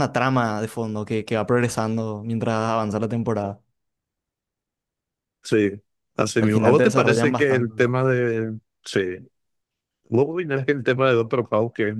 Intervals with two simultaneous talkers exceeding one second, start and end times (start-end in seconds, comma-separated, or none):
6.4-7.7